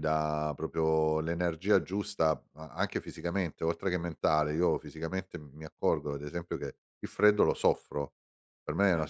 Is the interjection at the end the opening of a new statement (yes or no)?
no